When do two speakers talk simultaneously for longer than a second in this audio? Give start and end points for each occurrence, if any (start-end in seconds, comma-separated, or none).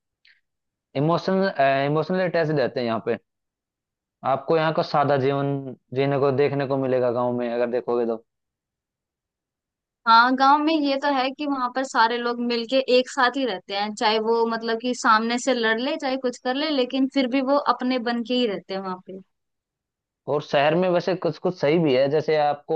none